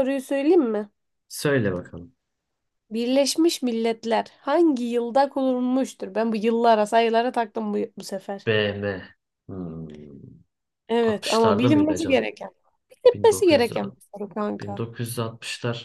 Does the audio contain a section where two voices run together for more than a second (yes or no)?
yes